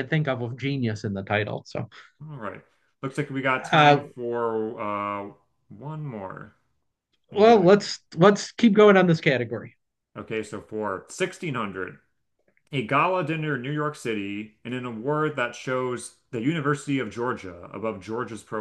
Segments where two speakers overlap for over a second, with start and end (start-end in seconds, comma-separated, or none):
none